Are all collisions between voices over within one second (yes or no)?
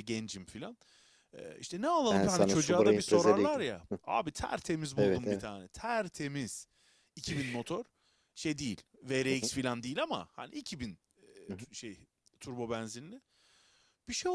no